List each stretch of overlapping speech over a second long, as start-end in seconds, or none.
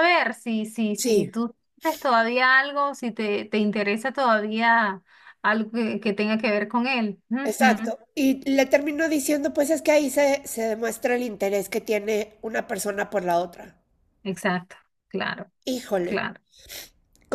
none